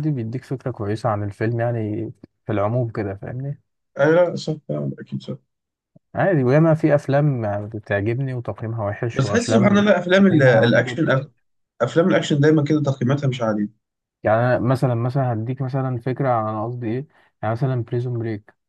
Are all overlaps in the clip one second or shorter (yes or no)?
no